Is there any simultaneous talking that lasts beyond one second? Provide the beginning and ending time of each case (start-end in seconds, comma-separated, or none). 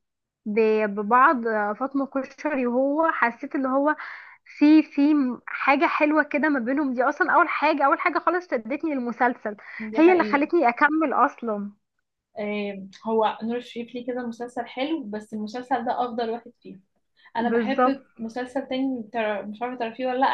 none